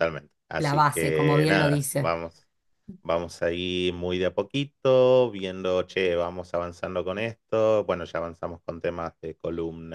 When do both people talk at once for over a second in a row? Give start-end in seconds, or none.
0.6-2.2